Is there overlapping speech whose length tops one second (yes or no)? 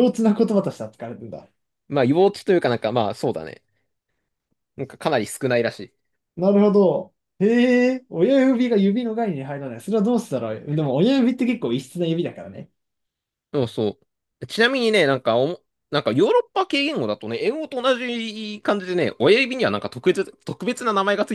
no